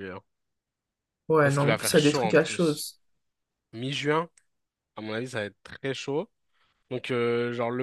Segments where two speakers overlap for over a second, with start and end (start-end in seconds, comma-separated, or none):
1.4-2.9